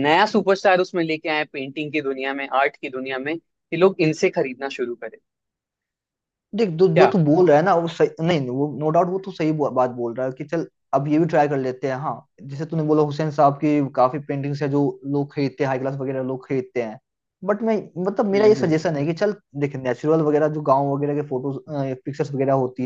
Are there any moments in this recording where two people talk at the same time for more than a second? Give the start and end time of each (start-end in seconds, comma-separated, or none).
none